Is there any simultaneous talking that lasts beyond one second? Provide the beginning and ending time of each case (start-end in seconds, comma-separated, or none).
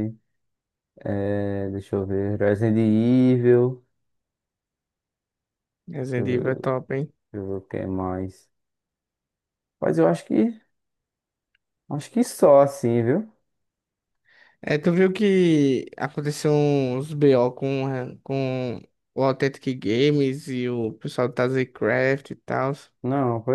none